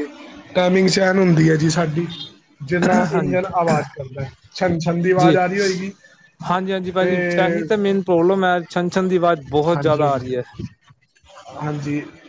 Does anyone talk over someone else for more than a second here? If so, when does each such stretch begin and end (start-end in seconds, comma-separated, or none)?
none